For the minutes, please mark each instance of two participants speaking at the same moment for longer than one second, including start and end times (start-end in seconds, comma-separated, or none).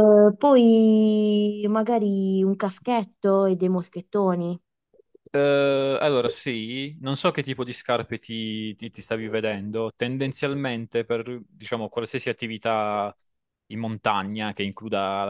none